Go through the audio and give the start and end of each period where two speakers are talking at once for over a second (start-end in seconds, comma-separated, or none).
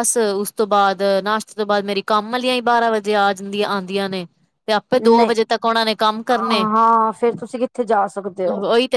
none